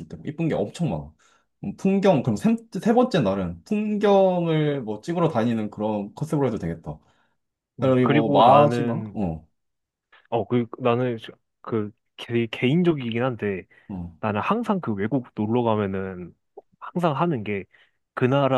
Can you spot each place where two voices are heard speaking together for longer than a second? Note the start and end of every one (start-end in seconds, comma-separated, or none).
7.8-9.2